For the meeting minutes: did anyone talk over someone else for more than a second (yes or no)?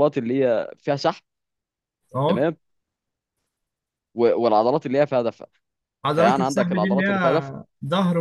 yes